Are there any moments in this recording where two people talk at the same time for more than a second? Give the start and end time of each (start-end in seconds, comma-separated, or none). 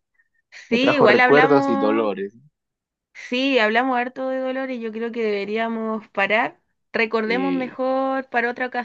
0.7-2.2